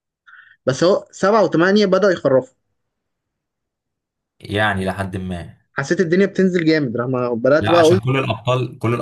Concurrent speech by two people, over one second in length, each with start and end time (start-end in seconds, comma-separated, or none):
none